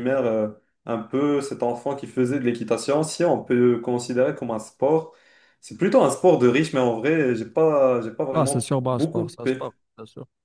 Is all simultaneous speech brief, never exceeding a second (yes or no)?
no